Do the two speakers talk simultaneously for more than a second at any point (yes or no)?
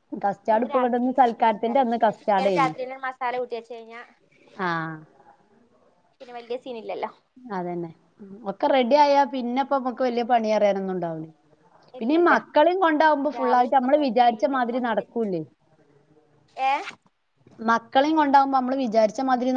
yes